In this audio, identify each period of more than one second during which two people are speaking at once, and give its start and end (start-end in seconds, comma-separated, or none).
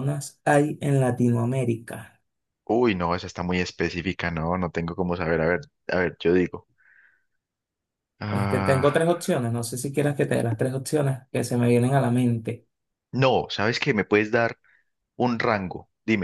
none